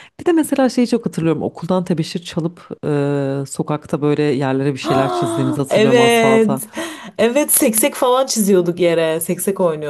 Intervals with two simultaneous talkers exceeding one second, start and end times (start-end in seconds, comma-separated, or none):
4.8-6.6